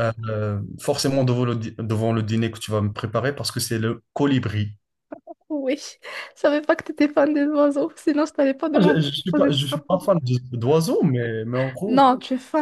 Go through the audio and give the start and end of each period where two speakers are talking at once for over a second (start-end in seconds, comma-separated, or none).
8.7-10.0